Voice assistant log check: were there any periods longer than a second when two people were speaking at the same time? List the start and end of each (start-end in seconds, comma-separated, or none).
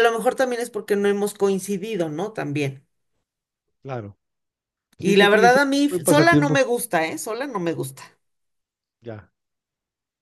5.0-6.6